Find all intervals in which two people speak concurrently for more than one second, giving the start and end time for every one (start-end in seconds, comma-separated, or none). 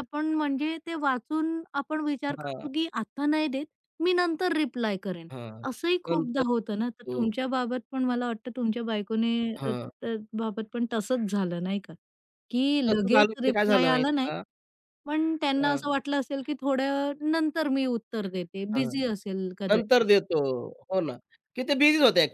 12.9-14.3